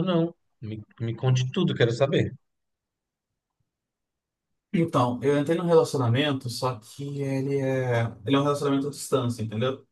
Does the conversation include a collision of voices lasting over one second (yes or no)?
no